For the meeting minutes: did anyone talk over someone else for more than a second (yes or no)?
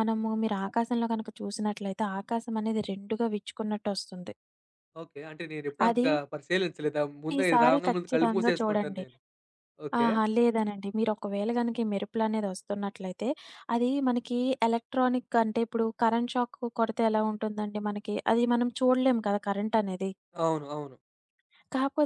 yes